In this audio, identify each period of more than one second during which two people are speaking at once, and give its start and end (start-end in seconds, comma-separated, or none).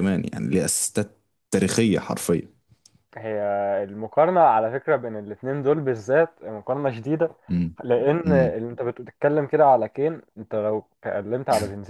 none